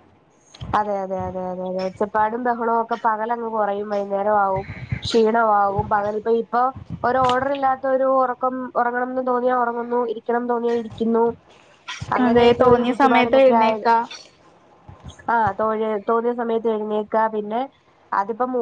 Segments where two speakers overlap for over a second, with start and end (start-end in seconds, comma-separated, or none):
12.2-13.8